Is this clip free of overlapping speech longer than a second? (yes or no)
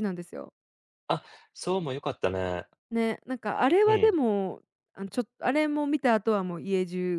yes